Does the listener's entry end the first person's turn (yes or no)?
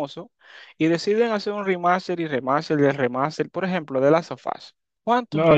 yes